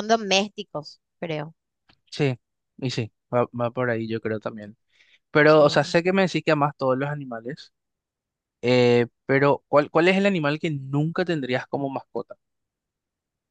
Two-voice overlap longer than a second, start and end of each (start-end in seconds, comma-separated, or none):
none